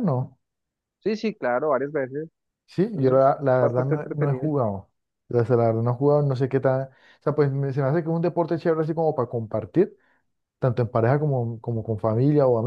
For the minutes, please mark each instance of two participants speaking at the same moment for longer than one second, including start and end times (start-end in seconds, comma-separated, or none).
2.9-4.5